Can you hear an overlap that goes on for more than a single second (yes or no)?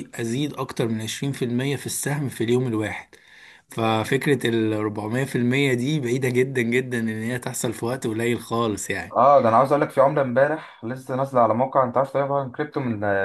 no